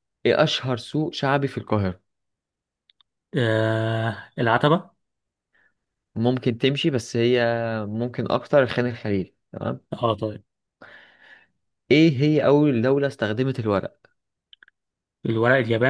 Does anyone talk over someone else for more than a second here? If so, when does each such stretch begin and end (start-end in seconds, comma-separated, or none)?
none